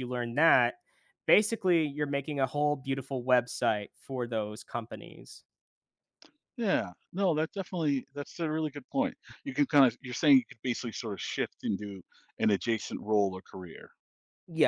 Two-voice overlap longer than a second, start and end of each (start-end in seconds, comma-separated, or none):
none